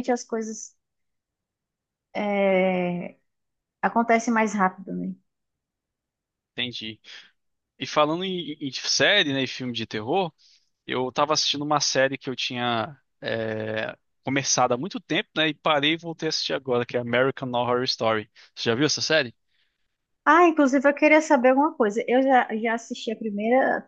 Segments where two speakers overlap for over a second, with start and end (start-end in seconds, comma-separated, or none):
none